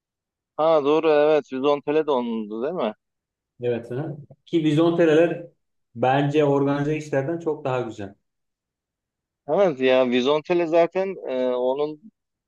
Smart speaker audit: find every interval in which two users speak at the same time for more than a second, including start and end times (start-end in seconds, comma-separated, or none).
none